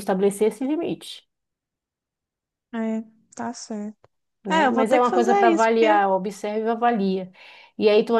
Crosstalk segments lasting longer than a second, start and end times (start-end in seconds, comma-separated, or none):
4.5-6.0